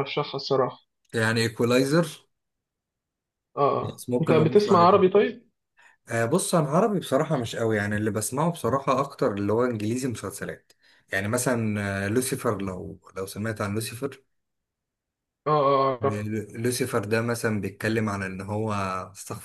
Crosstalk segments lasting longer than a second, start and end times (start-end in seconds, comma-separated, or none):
3.8-5.0